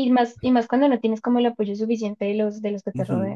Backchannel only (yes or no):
no